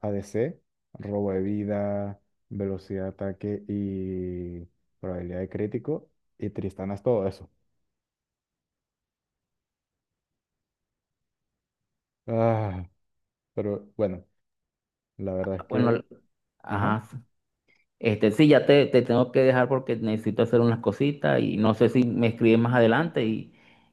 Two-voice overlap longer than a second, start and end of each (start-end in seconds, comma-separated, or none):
none